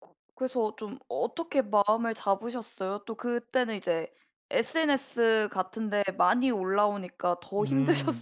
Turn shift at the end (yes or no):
yes